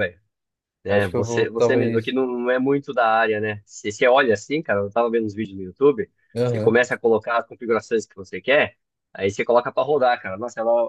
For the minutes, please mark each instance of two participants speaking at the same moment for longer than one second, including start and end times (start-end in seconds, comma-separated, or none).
0.9-2.1